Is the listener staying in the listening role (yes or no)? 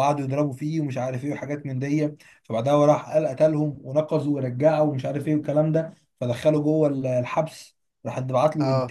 yes